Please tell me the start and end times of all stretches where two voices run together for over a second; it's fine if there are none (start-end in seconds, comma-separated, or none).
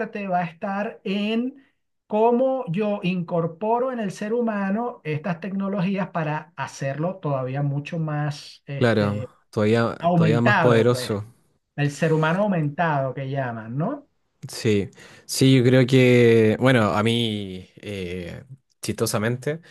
10.0-11.2